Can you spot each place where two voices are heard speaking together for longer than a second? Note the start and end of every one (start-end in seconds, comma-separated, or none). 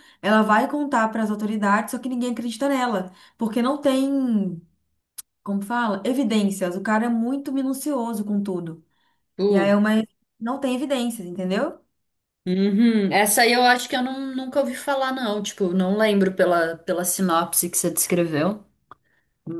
none